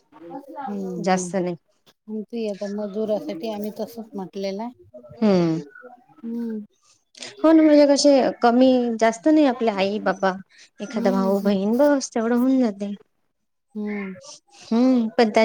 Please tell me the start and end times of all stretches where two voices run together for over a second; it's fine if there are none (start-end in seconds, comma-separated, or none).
none